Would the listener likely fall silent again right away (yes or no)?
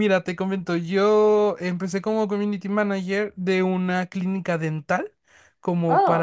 yes